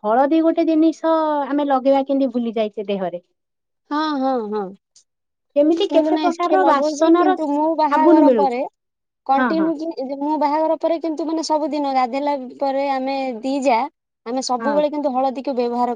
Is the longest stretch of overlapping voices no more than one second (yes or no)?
no